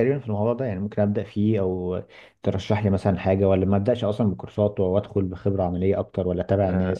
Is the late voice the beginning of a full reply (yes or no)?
yes